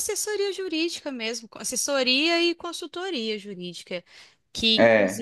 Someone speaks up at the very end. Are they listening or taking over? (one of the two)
listening